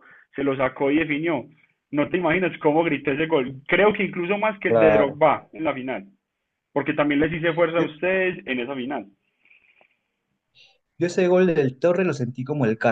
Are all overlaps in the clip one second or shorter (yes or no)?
yes